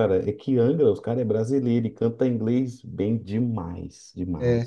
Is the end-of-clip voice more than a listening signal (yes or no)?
yes